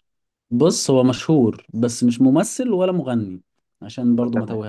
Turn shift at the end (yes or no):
yes